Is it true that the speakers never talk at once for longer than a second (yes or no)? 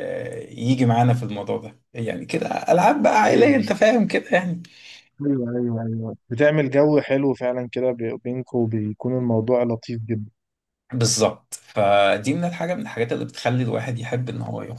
yes